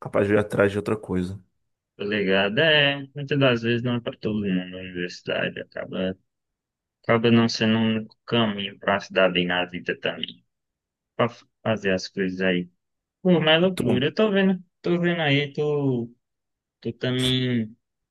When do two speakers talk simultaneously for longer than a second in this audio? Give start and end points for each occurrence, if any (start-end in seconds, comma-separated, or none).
none